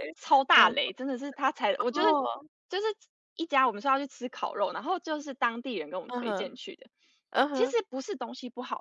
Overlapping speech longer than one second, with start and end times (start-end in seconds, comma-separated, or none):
none